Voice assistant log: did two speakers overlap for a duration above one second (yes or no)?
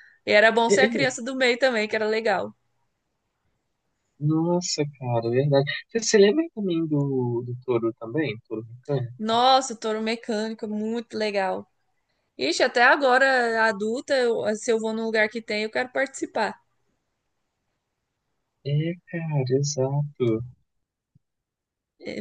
no